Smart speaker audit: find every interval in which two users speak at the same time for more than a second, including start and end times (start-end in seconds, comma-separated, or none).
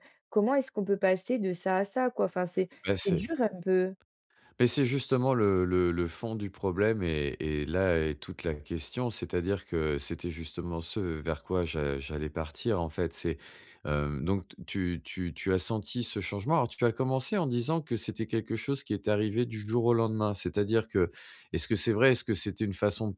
none